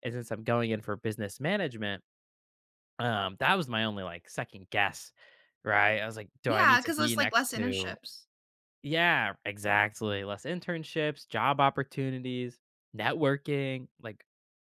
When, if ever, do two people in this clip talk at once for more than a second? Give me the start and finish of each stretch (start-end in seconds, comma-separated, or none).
6.5-8.0